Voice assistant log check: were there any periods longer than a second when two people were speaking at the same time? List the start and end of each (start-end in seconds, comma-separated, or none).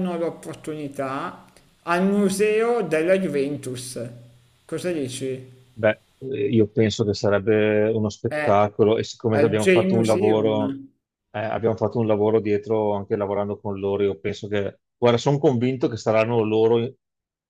9.3-10.6